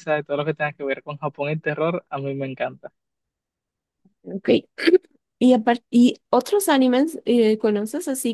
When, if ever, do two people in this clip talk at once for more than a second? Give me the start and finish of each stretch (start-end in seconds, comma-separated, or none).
none